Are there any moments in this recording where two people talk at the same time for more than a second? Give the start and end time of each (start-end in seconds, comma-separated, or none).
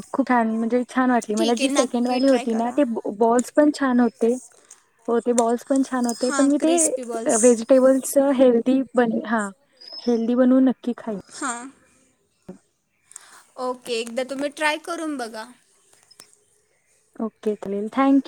1.4-2.8